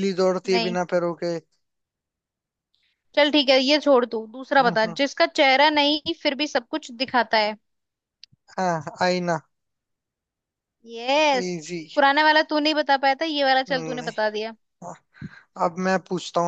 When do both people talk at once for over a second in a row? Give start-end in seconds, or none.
none